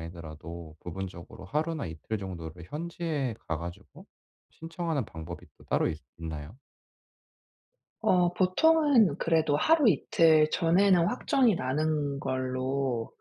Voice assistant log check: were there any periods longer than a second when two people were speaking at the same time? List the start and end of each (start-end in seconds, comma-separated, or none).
none